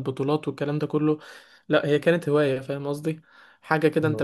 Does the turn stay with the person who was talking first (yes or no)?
yes